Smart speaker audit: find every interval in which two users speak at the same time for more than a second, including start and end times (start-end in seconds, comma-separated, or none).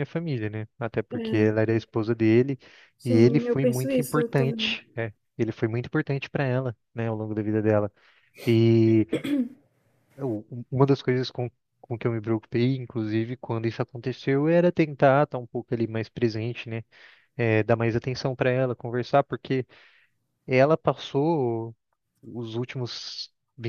3.0-4.8